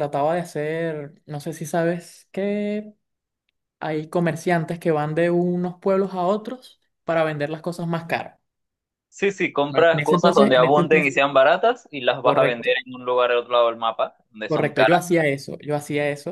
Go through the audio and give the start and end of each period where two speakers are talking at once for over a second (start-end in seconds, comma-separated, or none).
9.7-11.2